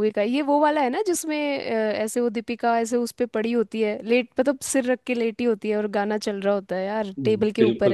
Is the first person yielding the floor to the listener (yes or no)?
yes